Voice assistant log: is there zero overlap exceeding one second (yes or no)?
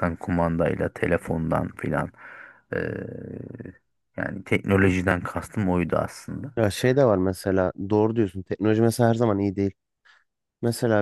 yes